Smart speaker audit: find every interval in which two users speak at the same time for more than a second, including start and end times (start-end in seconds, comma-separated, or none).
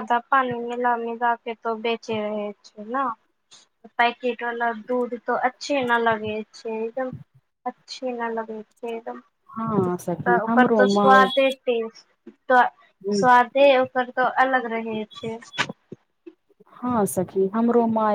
9.9-11.3